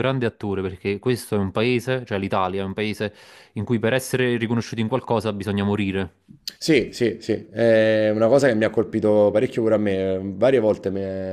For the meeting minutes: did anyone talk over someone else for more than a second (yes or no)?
no